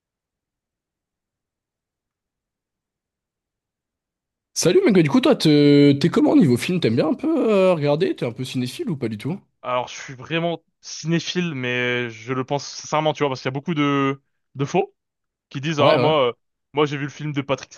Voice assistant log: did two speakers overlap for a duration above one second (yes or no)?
no